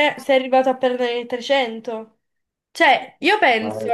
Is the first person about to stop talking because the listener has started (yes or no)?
no